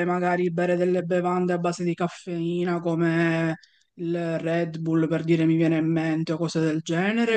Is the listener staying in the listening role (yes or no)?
no